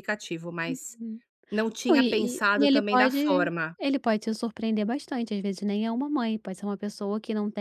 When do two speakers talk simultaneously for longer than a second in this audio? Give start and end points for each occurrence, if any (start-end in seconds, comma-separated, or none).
1.9-3.8